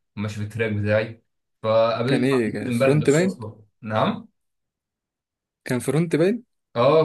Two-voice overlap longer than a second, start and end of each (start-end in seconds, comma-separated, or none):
2.0-3.4